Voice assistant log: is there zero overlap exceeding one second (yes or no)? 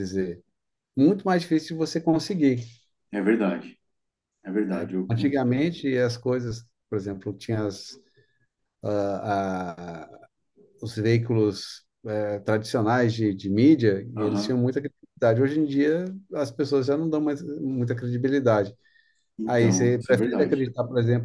no